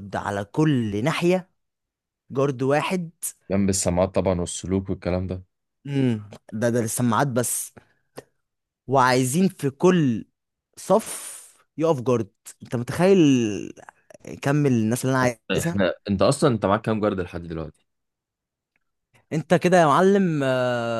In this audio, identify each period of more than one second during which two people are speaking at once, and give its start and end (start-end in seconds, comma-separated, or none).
none